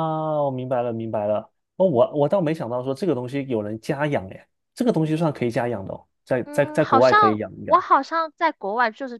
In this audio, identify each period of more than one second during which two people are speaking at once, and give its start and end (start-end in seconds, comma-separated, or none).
6.4-7.8